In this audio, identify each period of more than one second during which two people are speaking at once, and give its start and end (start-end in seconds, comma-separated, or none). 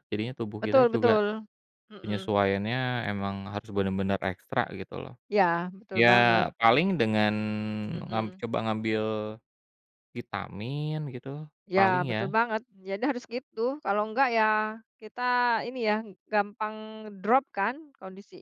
none